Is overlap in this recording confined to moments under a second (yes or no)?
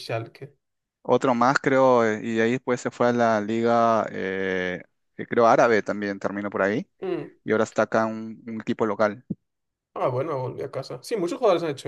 yes